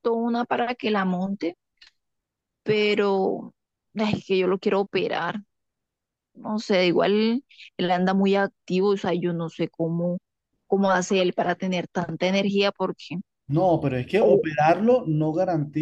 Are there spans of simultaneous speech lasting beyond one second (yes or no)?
no